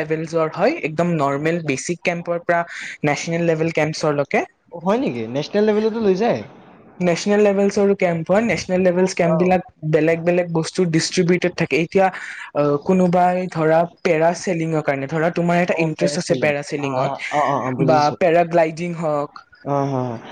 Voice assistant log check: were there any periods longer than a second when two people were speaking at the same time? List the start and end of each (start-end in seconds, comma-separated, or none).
15.8-18.1